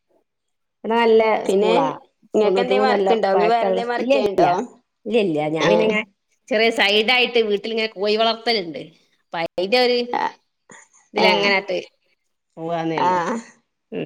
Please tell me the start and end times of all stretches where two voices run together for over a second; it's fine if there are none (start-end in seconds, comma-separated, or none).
2.4-4.5